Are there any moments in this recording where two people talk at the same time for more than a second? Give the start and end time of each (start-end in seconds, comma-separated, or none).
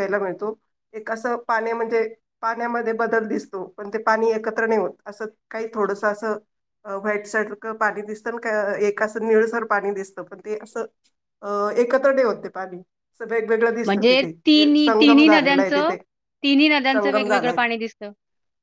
13.8-15.9